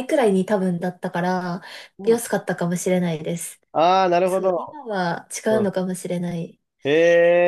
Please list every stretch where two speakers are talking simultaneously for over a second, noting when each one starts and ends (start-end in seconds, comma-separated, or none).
none